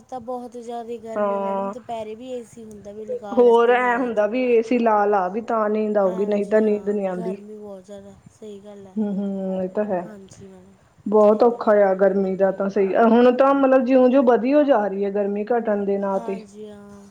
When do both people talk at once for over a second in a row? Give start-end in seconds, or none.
none